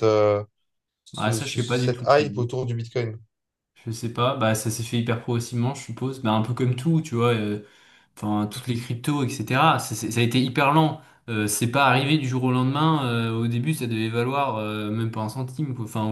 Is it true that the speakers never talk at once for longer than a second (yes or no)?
no